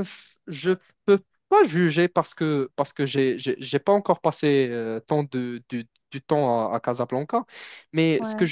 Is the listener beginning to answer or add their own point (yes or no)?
no